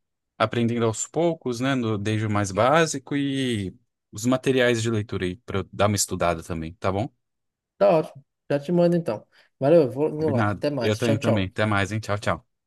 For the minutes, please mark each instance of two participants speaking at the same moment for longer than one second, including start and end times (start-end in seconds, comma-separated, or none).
10.2-11.5